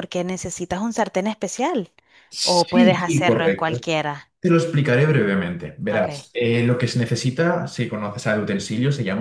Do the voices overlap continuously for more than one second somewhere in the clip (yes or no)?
yes